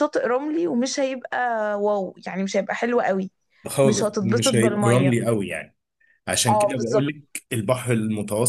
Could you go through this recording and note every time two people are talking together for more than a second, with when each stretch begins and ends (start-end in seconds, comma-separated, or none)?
3.8-5.1